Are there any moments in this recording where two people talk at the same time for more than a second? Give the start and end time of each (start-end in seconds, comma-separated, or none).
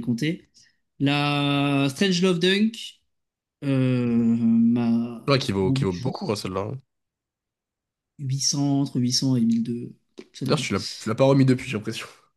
none